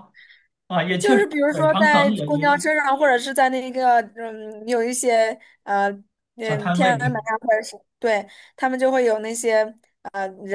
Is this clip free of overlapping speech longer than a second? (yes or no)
no